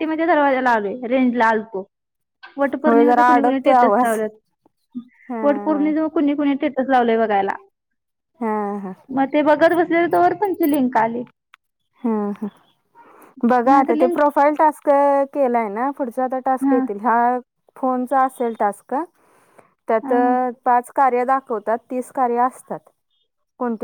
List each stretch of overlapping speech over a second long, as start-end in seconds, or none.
2.9-4.2